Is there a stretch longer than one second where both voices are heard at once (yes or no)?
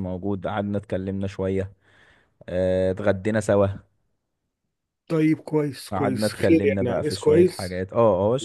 yes